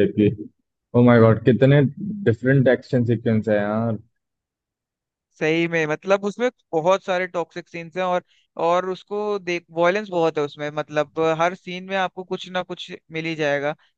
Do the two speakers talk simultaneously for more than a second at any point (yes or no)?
no